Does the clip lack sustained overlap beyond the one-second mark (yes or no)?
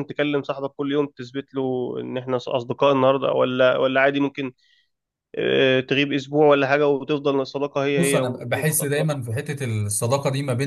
no